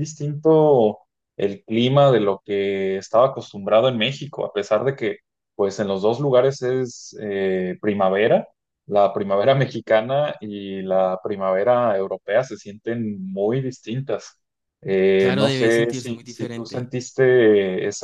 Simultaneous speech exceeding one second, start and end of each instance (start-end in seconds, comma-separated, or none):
15.2-16.9